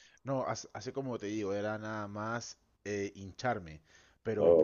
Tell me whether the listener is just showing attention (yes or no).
yes